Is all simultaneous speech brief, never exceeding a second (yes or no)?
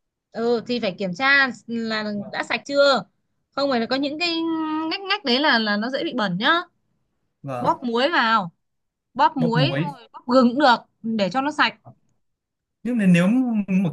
yes